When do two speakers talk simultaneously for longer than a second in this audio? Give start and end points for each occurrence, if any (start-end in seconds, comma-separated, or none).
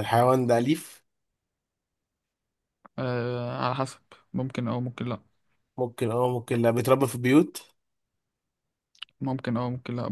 none